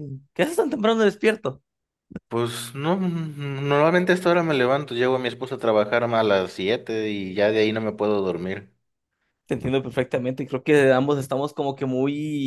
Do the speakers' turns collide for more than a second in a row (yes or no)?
no